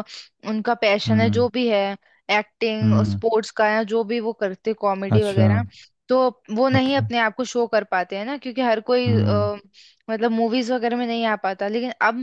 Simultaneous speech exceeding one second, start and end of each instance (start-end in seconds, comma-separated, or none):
none